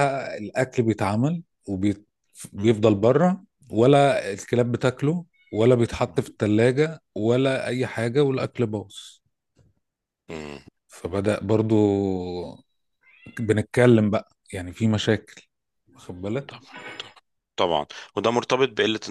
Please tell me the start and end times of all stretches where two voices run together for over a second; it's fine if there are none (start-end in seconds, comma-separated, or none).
none